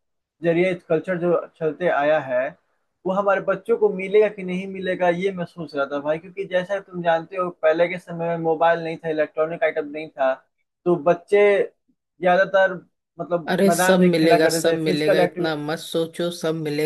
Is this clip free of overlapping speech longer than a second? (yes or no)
no